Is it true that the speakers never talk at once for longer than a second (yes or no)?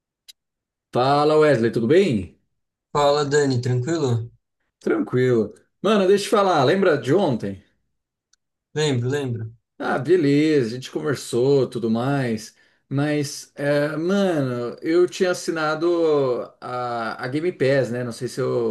yes